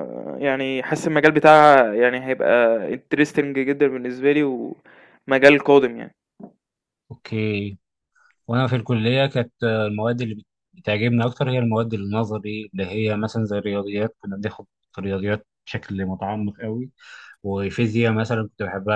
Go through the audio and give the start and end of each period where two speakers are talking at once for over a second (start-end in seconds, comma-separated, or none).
none